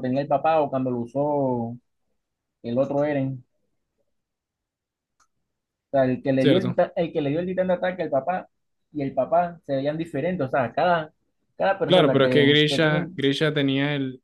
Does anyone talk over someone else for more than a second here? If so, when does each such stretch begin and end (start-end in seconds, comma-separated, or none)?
11.8-13.2